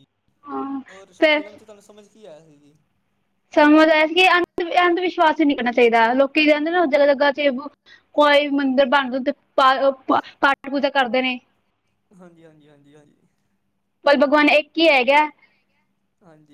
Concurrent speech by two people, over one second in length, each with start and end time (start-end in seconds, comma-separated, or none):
none